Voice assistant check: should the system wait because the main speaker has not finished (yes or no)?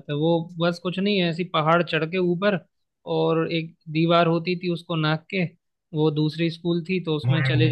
yes